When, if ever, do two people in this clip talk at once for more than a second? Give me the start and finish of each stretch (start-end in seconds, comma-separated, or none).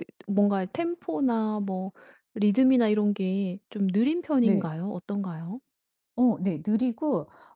none